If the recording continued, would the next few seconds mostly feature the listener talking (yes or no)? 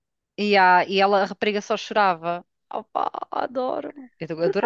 yes